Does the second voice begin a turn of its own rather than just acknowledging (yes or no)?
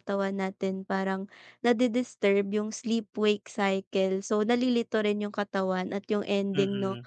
no